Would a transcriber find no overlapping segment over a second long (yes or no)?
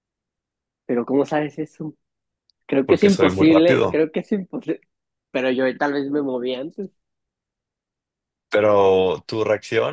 no